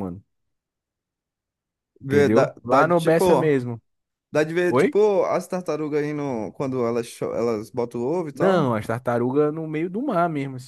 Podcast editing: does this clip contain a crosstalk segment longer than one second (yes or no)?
yes